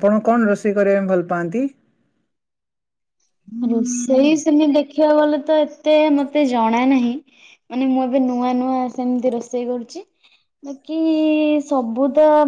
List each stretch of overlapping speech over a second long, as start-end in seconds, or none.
none